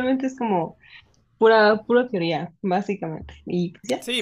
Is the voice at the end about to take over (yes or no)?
yes